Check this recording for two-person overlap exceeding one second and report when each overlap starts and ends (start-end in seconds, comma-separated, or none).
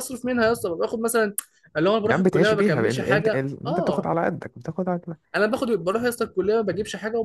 2.0-4.1